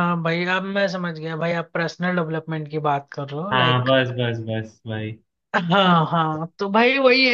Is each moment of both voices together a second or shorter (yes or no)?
yes